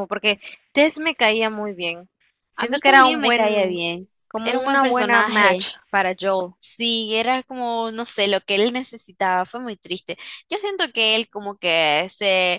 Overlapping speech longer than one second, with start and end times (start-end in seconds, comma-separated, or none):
2.5-3.8, 4.4-5.7